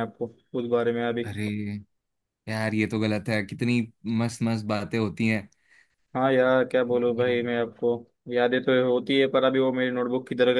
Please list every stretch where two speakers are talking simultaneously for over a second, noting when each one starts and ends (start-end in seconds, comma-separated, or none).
none